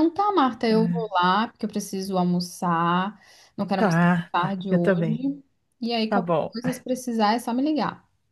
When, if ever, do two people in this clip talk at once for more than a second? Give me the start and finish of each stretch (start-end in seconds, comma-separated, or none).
3.8-5.2